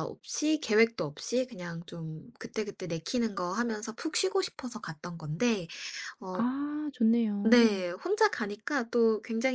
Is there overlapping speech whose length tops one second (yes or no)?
no